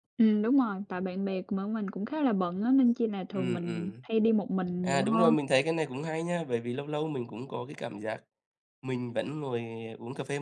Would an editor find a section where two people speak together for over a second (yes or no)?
no